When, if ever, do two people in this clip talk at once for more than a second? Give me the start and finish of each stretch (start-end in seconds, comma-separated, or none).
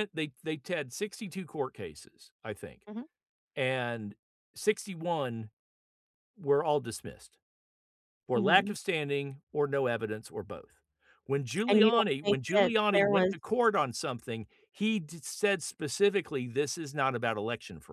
11.7-13.3